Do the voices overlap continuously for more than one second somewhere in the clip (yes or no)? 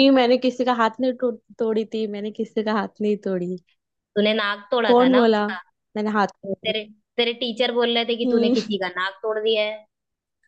no